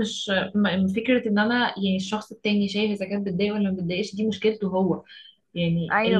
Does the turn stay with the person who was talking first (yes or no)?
yes